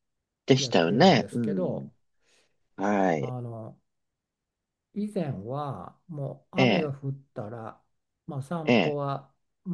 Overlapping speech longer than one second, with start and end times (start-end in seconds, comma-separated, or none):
0.6-1.9